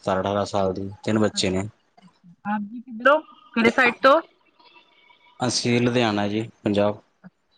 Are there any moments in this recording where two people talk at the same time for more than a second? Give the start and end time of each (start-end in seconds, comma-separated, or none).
none